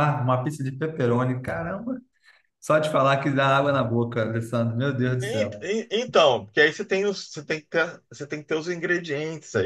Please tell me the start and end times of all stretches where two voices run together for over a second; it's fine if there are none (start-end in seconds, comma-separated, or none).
none